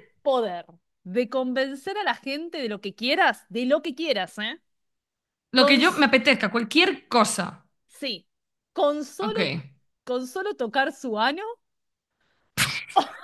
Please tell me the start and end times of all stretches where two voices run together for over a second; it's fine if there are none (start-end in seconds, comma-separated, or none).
none